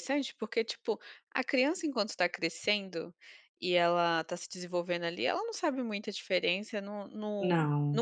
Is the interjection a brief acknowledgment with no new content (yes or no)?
yes